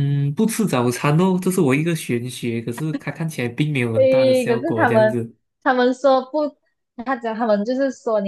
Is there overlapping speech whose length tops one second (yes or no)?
yes